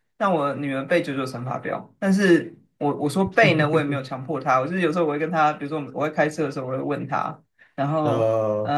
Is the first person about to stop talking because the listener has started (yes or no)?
no